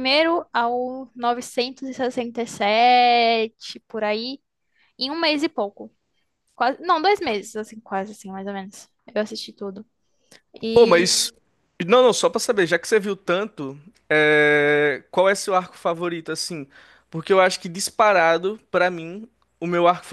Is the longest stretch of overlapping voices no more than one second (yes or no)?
yes